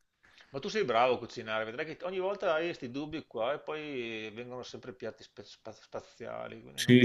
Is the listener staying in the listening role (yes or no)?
no